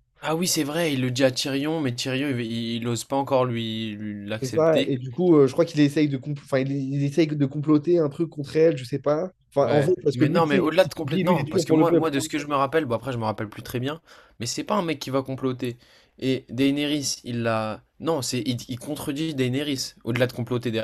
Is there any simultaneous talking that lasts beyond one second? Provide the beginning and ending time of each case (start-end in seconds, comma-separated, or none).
9.6-12.1